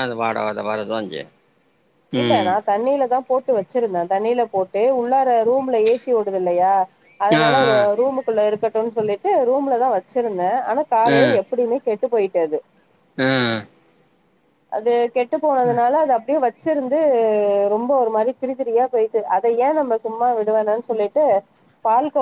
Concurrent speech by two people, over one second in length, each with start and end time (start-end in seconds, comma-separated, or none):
none